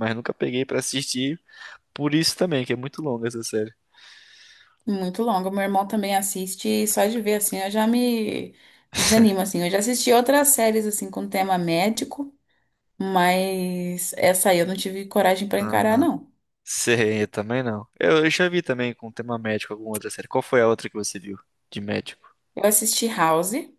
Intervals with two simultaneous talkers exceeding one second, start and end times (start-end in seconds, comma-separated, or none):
none